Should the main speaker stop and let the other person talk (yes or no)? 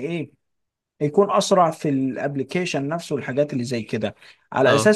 no